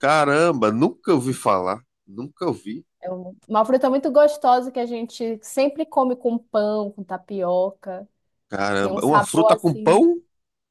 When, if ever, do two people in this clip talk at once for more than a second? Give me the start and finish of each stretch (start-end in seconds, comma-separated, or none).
8.8-10.1